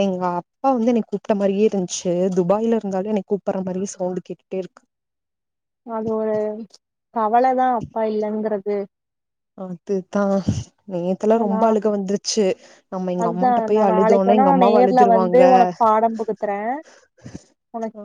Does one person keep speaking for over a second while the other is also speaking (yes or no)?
yes